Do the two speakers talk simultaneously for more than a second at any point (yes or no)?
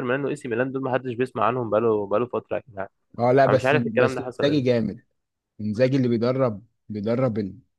yes